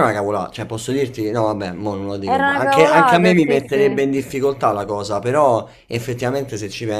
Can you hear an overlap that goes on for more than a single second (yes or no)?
yes